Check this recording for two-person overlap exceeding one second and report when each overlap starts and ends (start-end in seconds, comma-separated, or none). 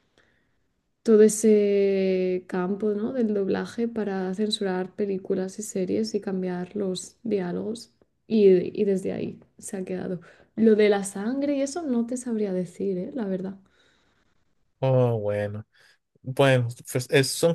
none